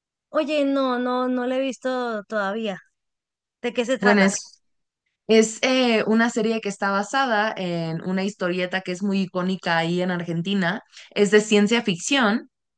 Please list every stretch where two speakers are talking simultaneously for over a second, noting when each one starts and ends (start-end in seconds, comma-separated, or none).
none